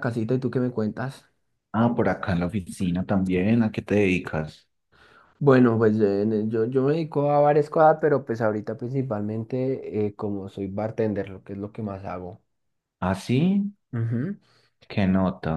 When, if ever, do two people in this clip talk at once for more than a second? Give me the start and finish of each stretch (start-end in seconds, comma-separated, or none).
none